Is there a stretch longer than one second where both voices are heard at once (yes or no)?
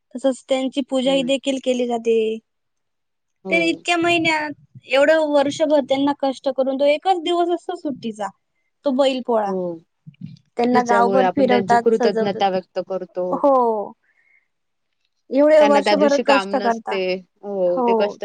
yes